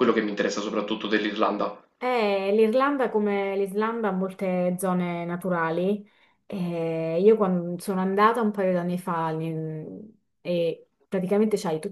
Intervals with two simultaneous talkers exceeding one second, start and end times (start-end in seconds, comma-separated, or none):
none